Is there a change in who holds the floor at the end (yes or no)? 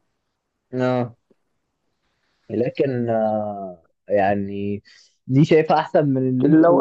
yes